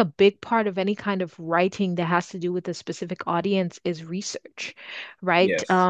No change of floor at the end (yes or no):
yes